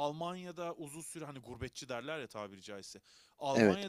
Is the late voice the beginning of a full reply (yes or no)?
no